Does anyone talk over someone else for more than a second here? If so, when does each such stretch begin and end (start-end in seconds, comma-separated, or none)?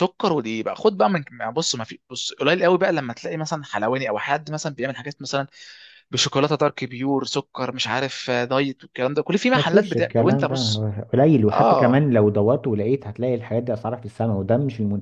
9.5-10.9